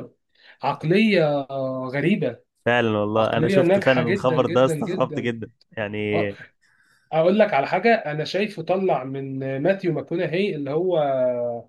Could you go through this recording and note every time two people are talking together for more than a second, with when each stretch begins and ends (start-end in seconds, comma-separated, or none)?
3.1-5.3